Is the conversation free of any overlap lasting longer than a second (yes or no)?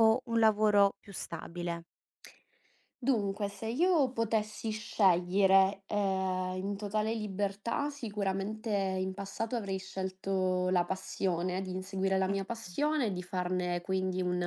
yes